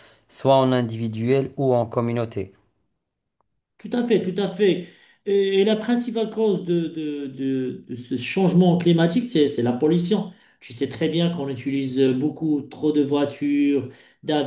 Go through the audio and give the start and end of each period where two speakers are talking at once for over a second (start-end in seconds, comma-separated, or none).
none